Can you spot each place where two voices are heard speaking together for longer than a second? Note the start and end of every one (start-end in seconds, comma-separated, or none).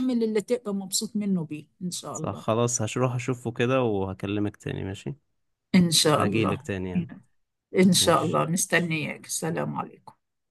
none